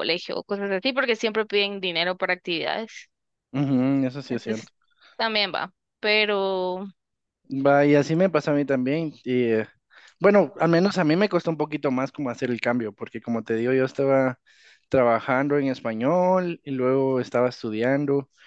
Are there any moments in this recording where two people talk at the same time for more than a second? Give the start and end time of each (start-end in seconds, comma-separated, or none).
none